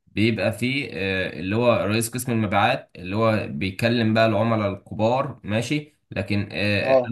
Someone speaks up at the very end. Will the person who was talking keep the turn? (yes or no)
yes